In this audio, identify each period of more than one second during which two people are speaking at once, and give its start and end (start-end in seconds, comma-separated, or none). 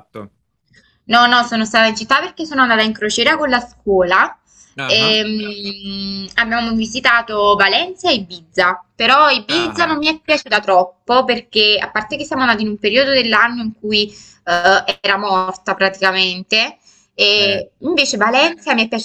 none